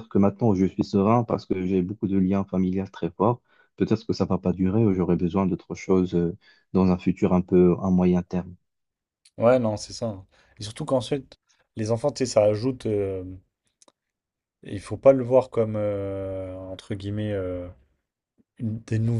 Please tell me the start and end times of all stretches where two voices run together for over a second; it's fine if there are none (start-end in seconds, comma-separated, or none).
none